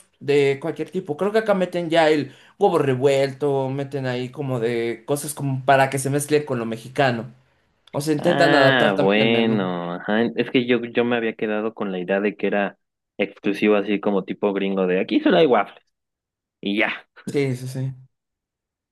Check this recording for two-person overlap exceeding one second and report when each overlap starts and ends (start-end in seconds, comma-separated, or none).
8.2-9.6